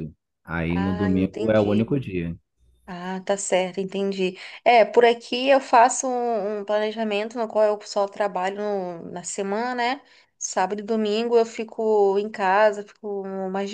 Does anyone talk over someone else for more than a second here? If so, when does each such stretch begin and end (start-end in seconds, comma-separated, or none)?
0.7-2.0